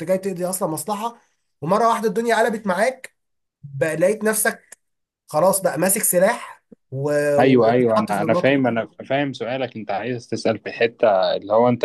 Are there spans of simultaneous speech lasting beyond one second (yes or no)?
yes